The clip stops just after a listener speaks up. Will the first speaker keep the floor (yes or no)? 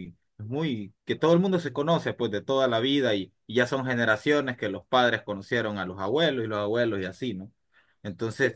yes